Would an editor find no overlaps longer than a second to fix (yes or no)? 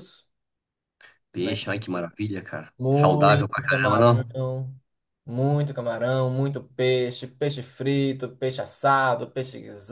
no